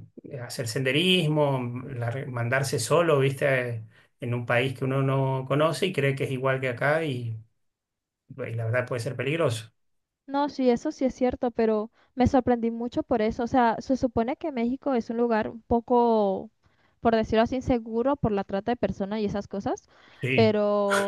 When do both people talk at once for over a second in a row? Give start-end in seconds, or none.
none